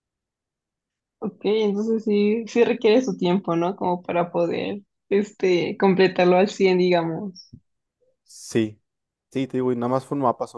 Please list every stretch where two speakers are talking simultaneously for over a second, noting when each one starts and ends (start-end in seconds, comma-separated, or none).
none